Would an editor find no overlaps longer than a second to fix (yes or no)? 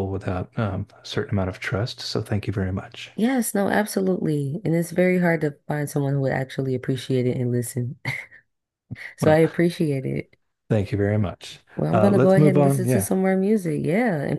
no